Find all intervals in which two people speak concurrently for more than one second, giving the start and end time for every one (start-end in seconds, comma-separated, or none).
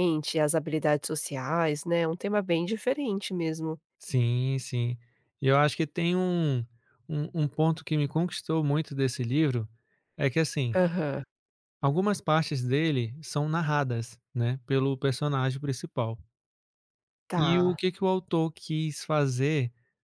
none